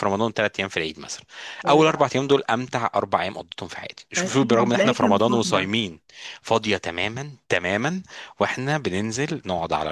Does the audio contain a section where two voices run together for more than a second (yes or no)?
yes